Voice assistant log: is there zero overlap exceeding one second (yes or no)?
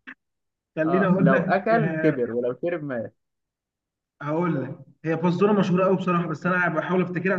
no